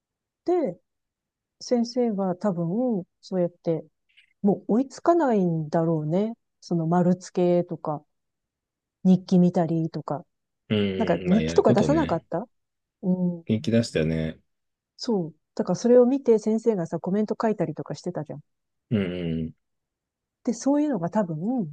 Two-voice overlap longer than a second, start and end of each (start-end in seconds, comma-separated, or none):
10.9-12.2